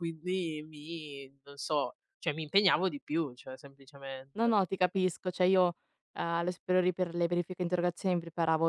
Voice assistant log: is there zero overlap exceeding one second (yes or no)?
yes